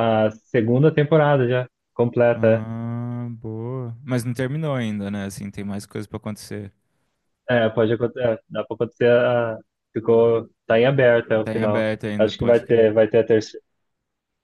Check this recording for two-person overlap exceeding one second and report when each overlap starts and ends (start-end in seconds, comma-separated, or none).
11.4-12.9